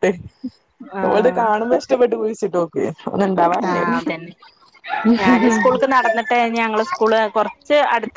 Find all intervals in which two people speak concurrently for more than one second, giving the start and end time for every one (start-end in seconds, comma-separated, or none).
none